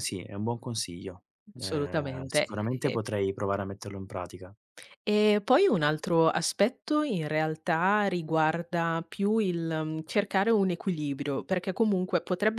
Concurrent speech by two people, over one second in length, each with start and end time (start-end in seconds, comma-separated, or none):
1.6-3.0